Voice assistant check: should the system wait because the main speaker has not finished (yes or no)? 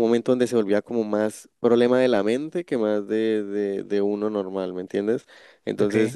yes